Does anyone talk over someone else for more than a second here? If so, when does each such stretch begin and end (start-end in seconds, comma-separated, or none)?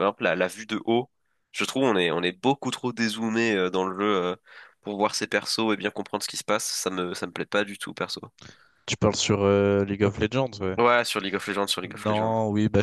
none